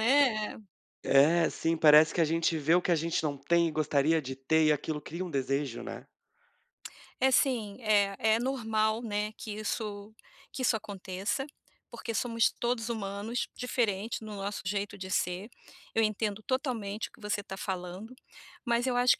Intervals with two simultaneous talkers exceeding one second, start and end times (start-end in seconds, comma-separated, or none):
none